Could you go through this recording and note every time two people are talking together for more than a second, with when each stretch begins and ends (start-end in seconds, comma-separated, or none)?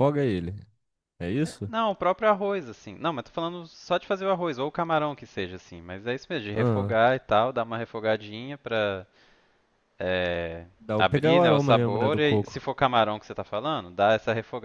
10.8-12.6